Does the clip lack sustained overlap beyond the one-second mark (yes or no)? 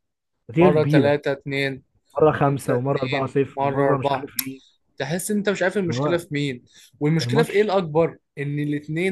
no